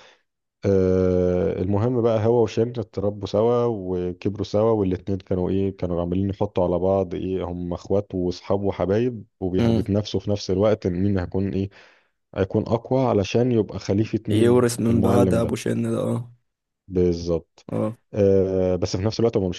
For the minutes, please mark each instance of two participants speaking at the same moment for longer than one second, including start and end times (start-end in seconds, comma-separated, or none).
14.3-15.6